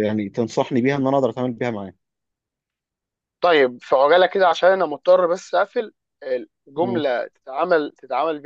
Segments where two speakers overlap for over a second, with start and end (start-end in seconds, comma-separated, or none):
none